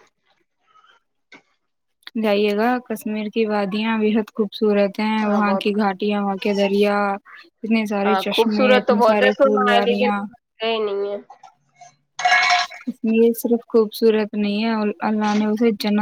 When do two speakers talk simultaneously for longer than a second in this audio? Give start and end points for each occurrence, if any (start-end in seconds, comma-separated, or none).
8.1-10.2